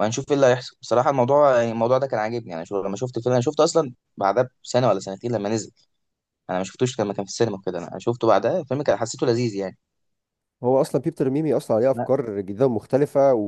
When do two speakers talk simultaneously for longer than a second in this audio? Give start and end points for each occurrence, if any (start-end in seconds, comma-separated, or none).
none